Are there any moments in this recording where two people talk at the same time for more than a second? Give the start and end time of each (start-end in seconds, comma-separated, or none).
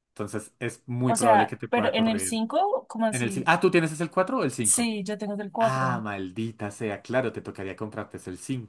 1.1-2.4